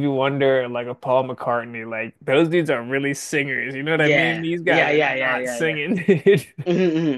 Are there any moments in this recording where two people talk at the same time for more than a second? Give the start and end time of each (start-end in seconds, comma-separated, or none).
3.9-5.8